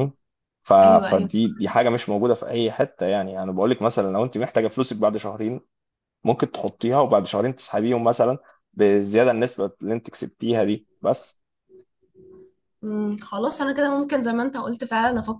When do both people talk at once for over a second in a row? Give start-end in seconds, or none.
none